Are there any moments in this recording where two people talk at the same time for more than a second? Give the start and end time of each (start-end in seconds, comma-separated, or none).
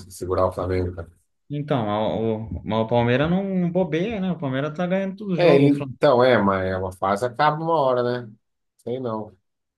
none